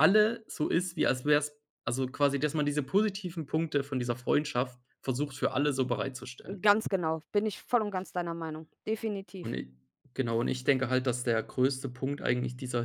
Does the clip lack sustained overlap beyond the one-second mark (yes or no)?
yes